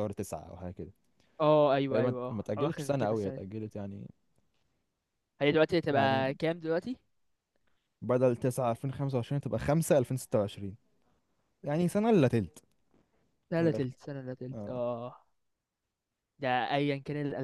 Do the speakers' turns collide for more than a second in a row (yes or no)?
yes